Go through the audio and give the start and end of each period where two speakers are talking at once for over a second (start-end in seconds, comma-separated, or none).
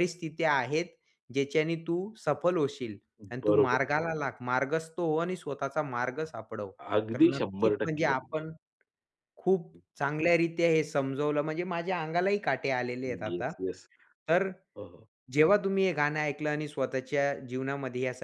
7.1-8.4